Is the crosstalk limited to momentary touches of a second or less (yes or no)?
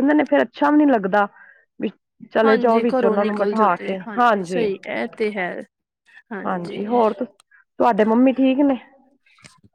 no